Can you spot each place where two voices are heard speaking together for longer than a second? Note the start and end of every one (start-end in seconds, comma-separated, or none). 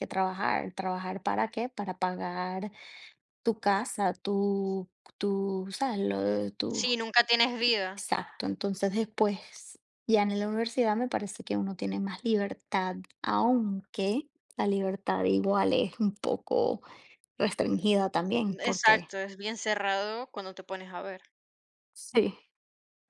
none